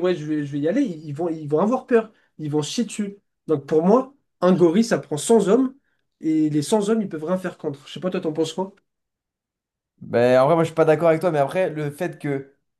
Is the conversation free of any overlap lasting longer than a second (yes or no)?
yes